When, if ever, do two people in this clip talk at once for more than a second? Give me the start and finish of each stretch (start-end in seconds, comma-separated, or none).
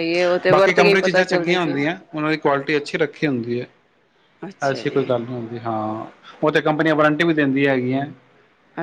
0.5-1.8